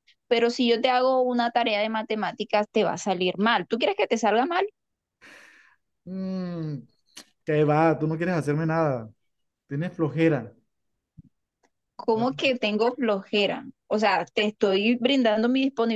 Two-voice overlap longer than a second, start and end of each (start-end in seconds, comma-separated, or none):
none